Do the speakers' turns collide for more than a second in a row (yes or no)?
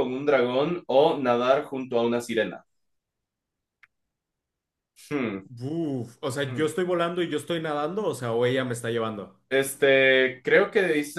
no